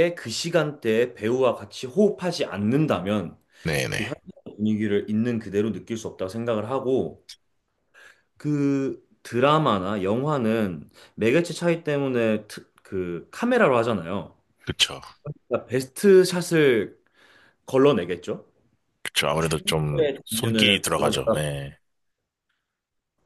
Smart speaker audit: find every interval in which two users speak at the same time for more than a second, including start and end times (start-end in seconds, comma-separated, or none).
19.9-21.4